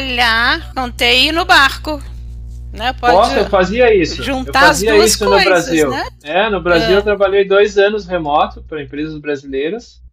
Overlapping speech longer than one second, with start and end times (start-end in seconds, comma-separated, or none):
4.2-6.0